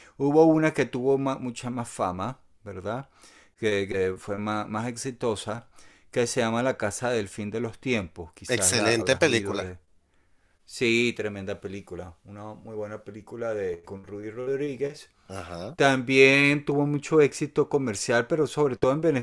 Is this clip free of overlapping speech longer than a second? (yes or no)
no